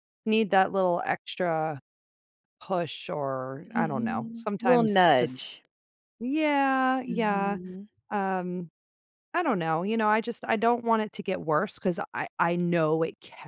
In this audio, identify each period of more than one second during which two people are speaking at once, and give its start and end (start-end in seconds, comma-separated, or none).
3.6-5.5